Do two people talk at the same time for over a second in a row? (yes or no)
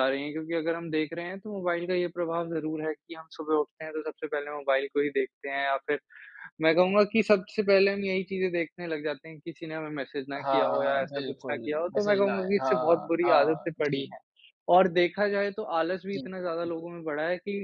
yes